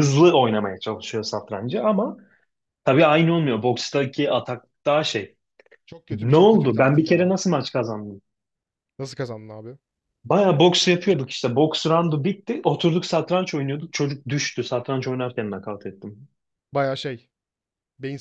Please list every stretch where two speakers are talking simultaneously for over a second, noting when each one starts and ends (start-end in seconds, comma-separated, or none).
6.1-7.3